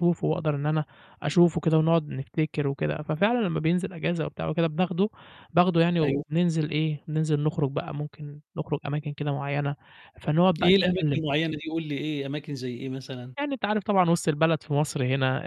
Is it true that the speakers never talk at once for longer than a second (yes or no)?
yes